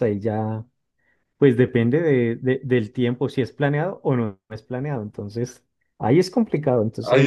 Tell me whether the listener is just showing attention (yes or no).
no